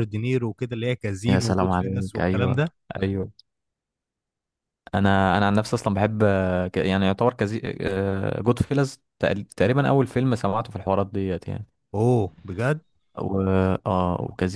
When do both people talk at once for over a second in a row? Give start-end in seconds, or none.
1.3-2.6